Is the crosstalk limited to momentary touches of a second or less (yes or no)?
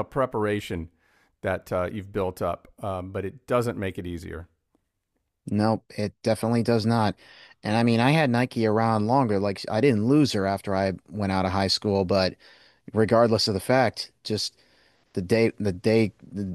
yes